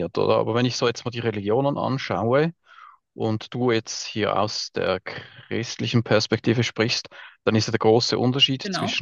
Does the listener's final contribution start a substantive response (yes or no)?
no